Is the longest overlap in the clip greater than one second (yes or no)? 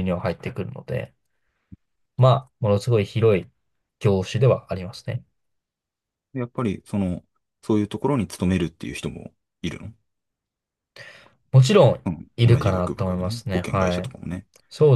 yes